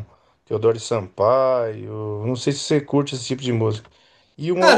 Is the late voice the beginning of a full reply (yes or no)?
yes